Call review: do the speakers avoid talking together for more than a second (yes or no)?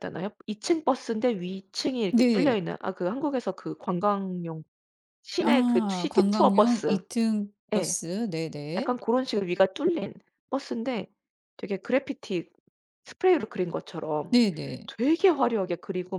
no